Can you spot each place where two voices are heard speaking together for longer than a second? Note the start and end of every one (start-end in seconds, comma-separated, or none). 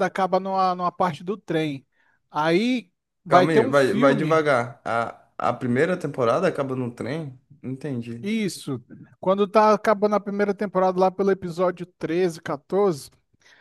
3.3-4.5